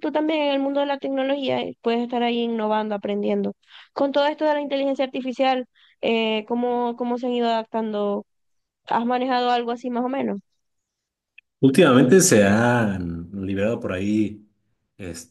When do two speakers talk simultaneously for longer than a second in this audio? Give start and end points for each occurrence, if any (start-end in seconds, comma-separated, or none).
none